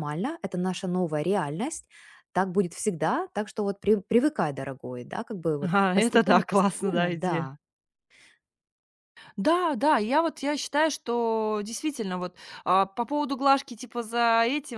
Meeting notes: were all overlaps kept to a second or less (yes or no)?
no